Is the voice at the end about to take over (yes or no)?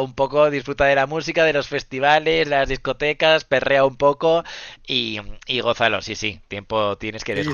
yes